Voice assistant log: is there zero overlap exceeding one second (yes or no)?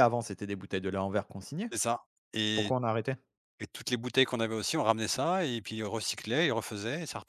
yes